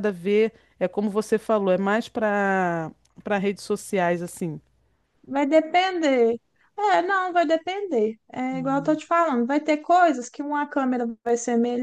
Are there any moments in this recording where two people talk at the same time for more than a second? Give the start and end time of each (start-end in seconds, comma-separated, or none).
none